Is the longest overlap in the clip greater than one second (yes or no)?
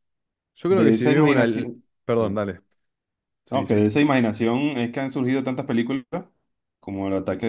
yes